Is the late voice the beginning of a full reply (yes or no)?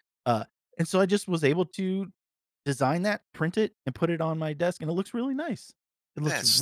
yes